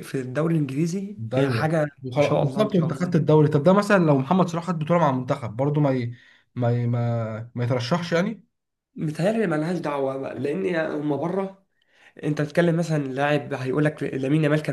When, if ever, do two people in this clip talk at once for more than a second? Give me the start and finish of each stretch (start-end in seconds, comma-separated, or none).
1.2-3.3